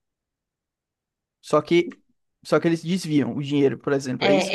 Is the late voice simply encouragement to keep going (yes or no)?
no